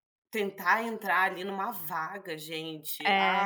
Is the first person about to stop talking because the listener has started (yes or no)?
no